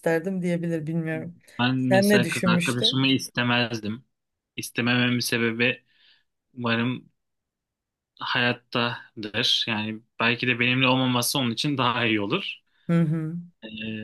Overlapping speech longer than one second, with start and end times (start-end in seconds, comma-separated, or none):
1.8-3.1